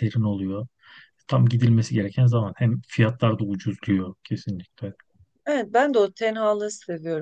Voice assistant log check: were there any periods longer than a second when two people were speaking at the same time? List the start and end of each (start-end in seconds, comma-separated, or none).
none